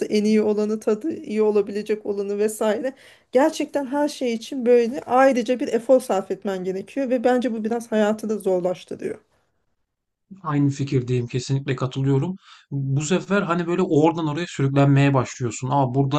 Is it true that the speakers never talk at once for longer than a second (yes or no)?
yes